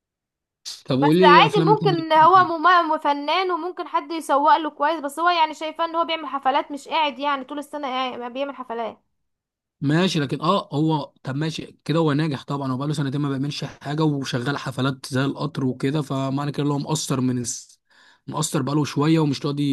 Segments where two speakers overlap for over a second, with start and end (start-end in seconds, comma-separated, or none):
1.0-2.5